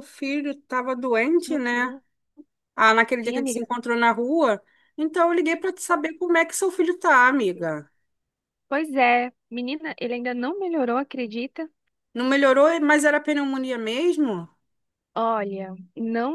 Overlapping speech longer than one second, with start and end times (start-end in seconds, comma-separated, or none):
none